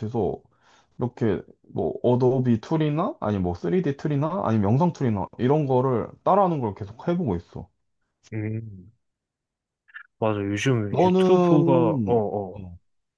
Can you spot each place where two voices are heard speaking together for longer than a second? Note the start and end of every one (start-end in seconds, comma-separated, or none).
10.9-12.6